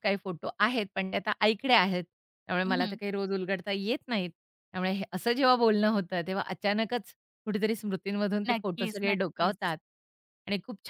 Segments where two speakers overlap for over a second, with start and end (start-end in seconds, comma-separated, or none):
8.5-9.7